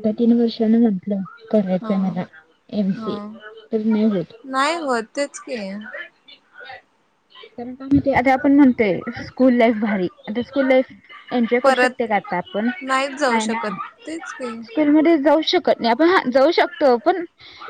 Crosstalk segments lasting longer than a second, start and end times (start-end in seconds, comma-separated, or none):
none